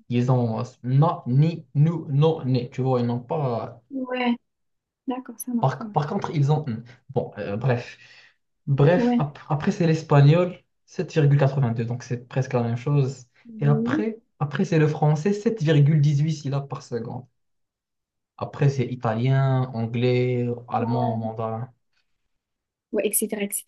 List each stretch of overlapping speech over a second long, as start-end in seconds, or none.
none